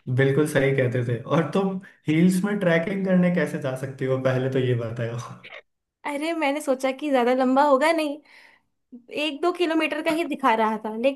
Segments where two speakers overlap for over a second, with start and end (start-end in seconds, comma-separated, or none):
none